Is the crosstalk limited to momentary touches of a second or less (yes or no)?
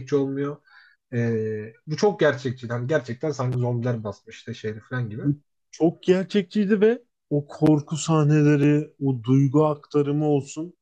yes